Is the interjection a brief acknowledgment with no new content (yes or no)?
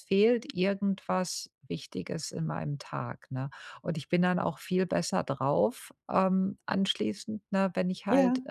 yes